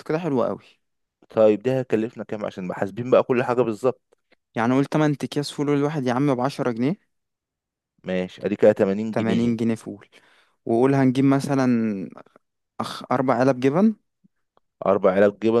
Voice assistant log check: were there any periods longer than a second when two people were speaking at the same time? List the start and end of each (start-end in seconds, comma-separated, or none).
none